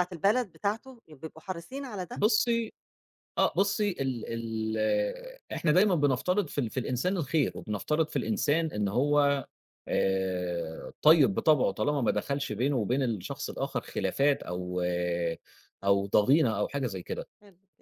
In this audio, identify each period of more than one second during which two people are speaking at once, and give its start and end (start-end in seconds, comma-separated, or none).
none